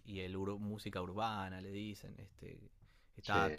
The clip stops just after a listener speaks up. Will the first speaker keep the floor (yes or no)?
no